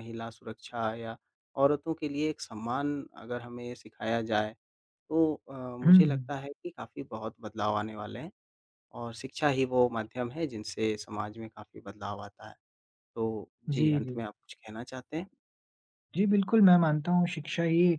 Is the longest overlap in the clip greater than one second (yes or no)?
no